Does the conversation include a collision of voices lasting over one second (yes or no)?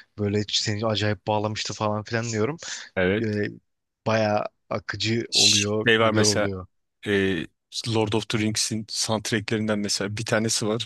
yes